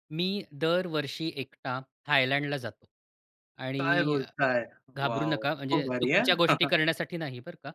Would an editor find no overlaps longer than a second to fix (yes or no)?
no